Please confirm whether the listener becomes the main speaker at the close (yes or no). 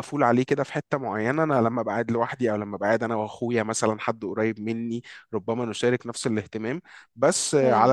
no